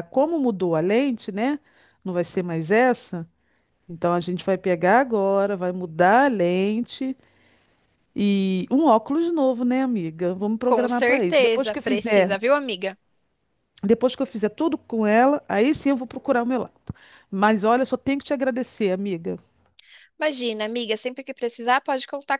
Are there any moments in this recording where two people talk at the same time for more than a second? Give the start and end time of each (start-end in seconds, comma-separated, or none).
10.7-12.3